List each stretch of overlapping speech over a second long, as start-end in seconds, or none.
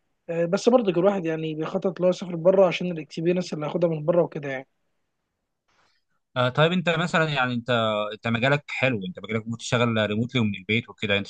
none